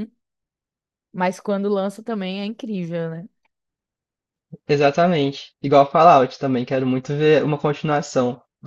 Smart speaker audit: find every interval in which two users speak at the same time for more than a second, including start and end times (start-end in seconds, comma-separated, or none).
none